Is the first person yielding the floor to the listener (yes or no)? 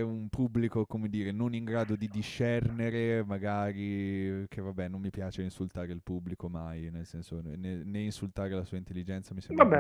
yes